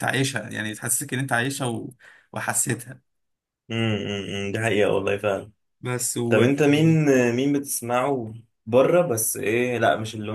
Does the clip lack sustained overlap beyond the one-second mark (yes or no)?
yes